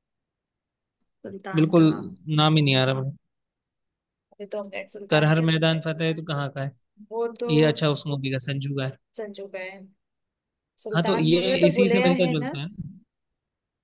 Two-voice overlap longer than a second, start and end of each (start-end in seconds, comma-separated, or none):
10.9-12.5